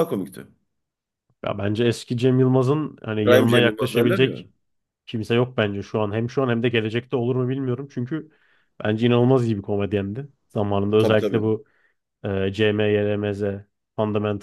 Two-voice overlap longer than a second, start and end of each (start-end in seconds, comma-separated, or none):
3.2-4.4